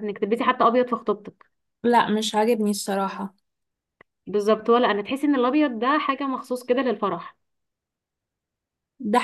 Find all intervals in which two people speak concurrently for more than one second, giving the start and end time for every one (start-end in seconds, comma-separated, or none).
none